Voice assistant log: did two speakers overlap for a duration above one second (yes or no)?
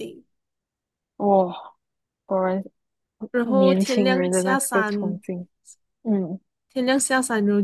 yes